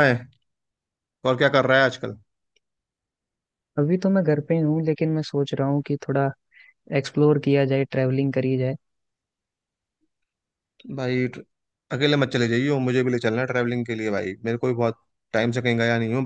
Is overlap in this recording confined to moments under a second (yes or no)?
yes